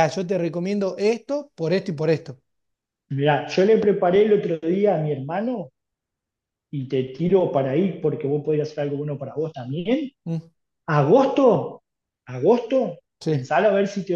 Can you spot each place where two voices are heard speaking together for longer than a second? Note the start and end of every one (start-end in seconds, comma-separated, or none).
none